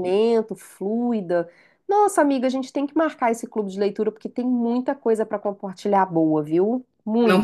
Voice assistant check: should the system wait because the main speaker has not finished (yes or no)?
no